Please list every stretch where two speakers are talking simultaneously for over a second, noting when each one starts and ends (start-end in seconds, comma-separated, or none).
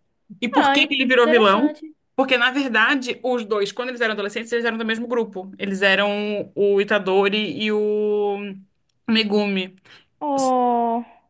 0.5-1.8